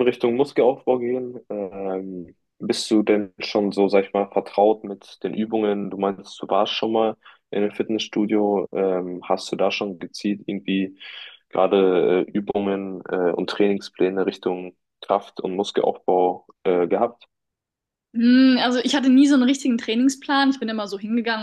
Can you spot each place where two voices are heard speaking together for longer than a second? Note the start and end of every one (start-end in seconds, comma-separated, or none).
none